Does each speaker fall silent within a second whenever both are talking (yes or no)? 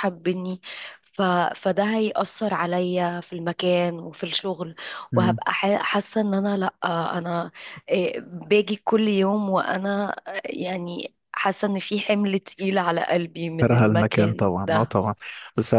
no